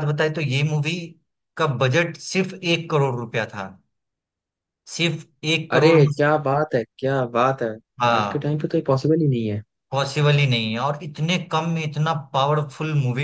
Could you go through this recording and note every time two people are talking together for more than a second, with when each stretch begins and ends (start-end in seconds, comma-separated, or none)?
none